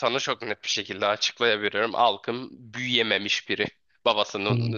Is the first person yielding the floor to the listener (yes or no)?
no